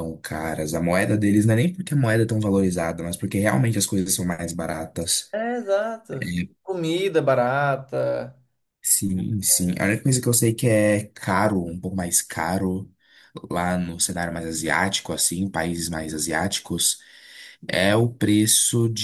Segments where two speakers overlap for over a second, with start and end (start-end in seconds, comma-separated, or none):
none